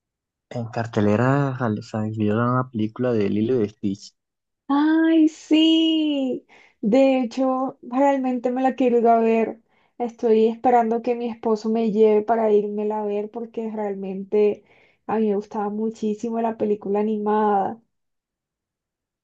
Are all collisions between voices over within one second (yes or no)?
yes